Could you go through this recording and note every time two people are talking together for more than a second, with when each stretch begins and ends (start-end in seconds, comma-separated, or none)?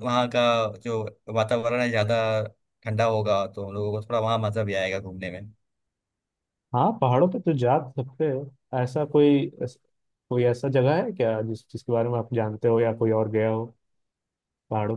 none